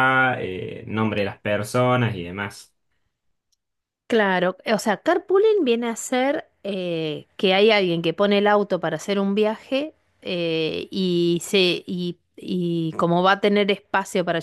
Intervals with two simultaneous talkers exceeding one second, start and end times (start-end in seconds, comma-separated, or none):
none